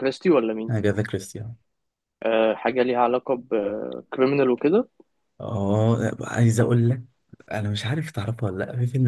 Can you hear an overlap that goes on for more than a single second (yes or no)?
no